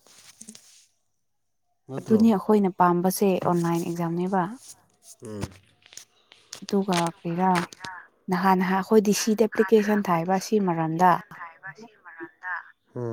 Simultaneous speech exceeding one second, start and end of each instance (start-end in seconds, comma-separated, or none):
9.7-11.1